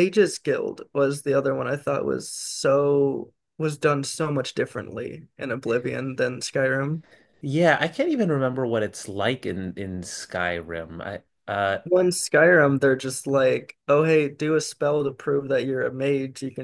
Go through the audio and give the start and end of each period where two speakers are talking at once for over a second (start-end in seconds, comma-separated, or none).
none